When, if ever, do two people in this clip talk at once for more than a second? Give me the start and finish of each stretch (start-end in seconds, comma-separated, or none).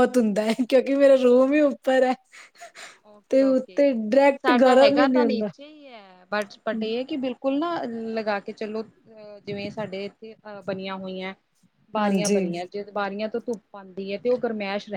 3.3-5.5